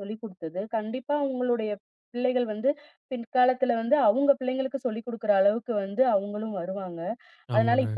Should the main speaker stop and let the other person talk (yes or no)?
no